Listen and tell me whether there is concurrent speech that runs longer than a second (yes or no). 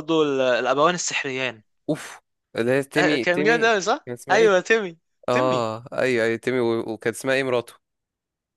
yes